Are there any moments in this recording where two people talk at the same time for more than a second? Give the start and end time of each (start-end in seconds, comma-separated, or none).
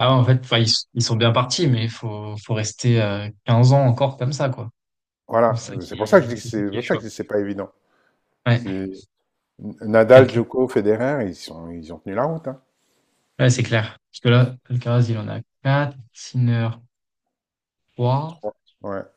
5.5-7.0